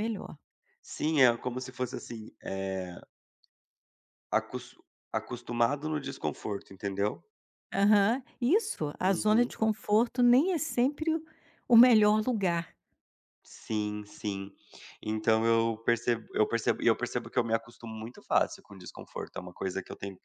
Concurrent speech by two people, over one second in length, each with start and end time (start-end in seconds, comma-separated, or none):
none